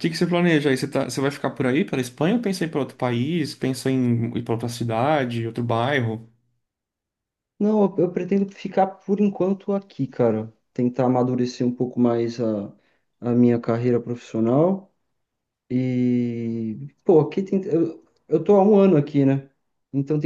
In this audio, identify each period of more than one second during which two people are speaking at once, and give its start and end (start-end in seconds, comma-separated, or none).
none